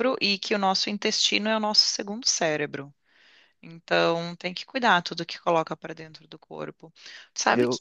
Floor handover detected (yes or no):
no